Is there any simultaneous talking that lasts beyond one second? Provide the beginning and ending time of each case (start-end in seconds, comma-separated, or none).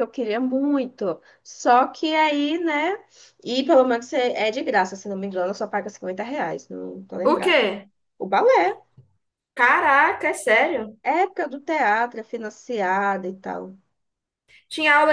none